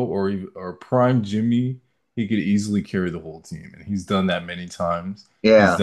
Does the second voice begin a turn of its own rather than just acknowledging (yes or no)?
no